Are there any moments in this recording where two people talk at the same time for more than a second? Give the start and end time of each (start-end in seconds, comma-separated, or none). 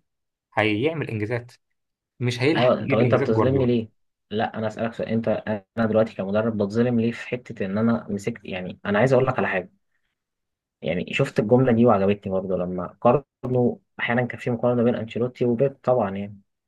2.5-3.8